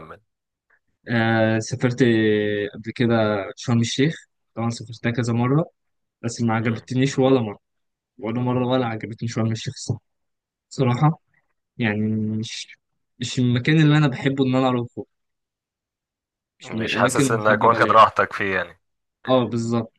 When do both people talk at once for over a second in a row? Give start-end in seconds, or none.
16.6-18.0